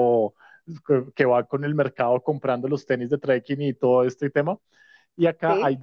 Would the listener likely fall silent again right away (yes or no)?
yes